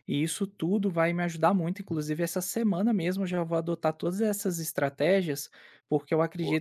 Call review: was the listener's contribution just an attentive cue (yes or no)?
yes